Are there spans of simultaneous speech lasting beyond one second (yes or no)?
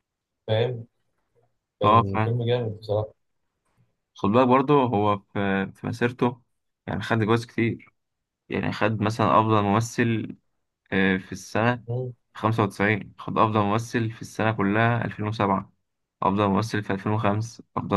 no